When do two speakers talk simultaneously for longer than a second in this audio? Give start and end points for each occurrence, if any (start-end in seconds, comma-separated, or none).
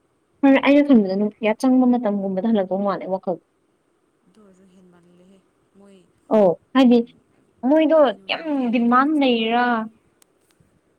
7.7-9.6